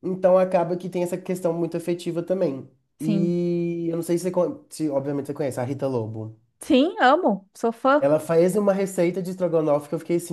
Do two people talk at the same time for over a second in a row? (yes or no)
no